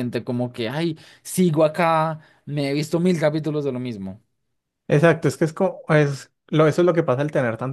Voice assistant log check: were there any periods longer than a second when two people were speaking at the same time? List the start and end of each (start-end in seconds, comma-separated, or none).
none